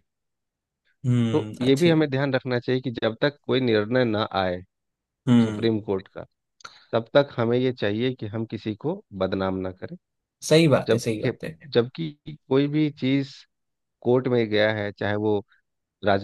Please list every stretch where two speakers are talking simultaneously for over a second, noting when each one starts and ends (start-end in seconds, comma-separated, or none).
none